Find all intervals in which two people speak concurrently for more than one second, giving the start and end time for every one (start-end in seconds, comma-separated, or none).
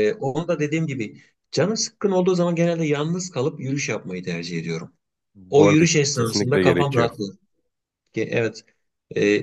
5.5-7.1